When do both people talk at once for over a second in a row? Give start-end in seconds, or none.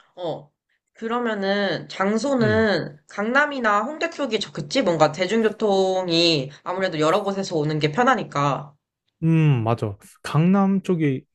none